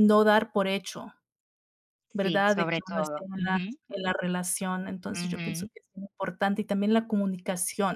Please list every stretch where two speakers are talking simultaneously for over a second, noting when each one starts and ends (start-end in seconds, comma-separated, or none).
2.1-3.8